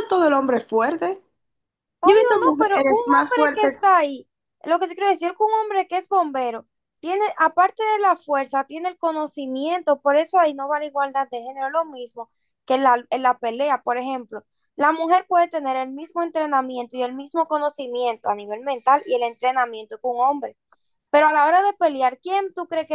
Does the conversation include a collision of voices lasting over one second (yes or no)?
yes